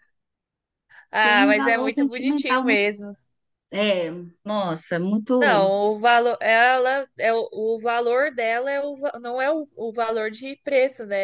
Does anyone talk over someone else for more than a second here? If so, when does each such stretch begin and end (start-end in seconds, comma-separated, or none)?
1.2-2.8